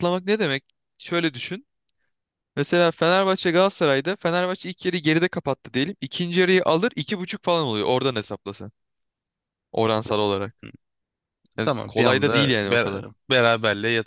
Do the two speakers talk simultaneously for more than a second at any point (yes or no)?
yes